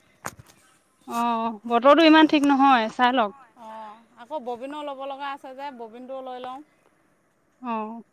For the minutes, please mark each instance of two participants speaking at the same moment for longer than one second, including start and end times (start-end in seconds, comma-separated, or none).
none